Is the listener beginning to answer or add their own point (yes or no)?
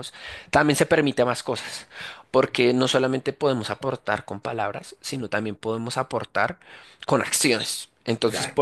no